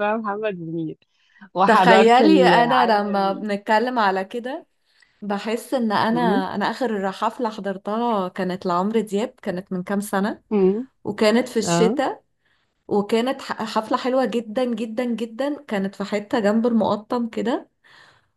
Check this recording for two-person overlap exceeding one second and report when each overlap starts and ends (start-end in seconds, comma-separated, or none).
1.7-3.4